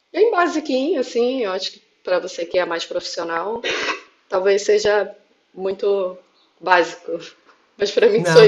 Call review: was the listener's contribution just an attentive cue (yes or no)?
no